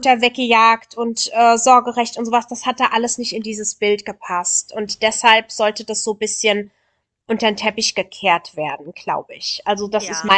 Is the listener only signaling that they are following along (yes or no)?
yes